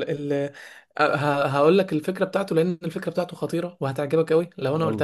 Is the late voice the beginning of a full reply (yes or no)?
no